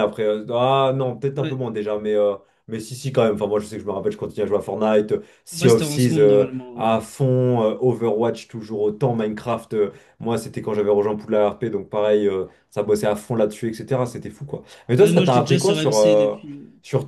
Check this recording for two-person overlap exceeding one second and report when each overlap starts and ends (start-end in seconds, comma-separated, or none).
5.5-6.9, 15.0-16.4